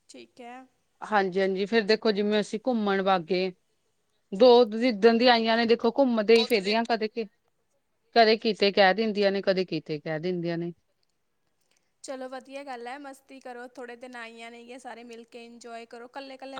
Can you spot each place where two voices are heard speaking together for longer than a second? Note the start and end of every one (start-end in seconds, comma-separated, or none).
none